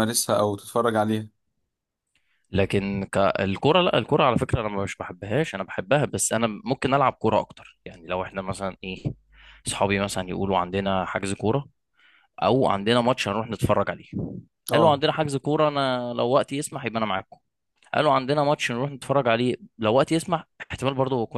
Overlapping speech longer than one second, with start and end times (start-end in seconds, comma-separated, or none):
none